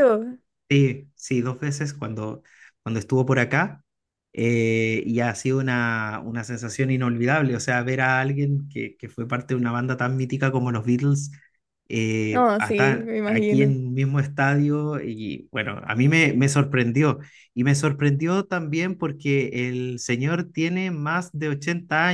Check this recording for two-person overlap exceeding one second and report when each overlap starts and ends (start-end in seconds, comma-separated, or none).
12.3-13.7